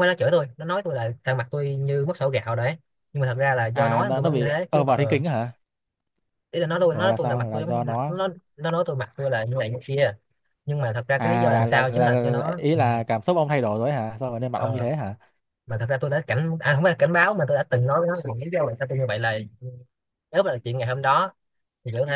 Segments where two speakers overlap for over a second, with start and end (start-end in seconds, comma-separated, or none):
3.7-5.2, 6.9-8.1, 11.2-12.8